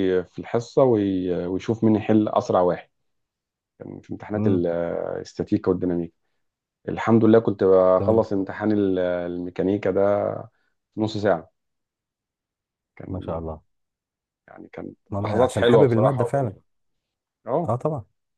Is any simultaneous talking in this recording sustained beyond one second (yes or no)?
yes